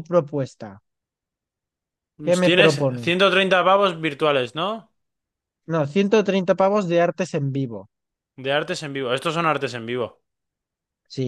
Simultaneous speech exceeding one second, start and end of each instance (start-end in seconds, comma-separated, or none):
none